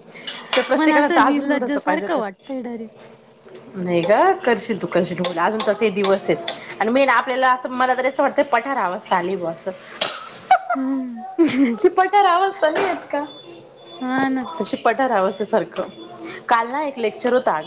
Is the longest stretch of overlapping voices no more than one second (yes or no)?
no